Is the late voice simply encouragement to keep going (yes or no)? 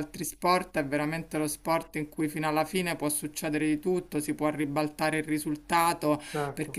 yes